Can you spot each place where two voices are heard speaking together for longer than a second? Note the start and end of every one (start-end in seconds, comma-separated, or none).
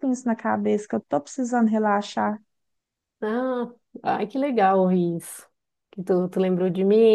none